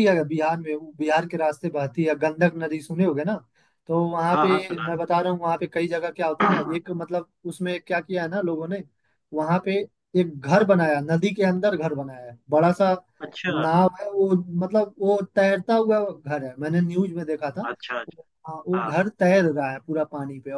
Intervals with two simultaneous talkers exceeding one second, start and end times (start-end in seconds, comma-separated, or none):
none